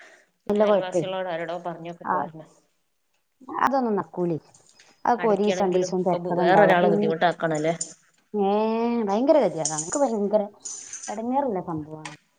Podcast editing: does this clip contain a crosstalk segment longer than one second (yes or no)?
yes